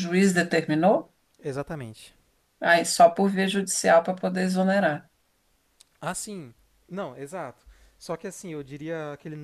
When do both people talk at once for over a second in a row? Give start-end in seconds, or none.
none